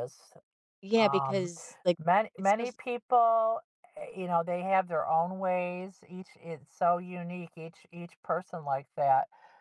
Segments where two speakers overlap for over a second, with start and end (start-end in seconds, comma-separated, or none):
none